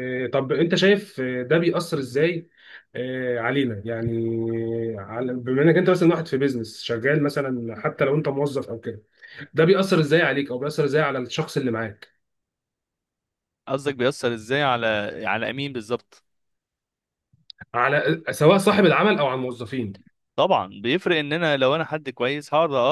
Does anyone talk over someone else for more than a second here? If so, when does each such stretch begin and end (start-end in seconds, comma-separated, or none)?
none